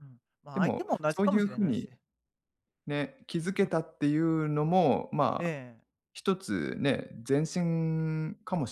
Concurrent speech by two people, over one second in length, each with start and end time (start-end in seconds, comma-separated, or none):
0.5-1.9